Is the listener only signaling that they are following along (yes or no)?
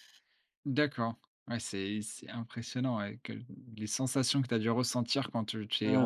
no